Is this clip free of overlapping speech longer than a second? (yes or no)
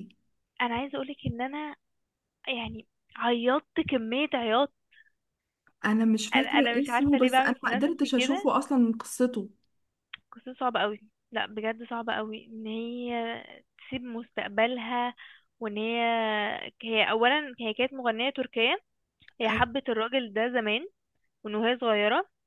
no